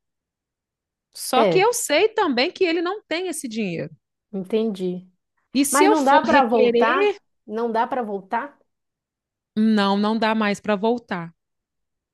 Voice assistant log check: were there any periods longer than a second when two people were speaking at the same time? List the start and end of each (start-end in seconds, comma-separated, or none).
5.7-7.2